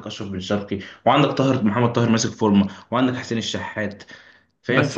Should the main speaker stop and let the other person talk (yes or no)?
yes